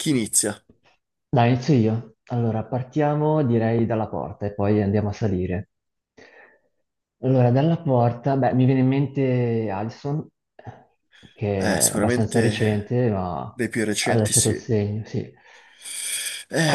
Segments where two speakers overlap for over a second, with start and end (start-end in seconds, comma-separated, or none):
11.6-13.0